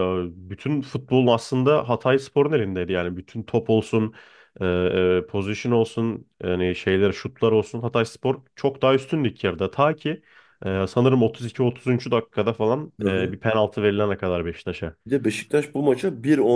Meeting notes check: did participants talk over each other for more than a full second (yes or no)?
no